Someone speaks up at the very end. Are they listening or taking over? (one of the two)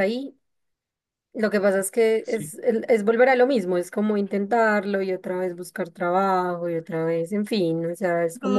taking over